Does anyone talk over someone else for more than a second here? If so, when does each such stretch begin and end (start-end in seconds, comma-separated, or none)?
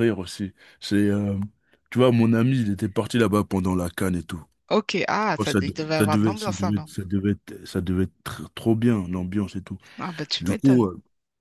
5.4-6.9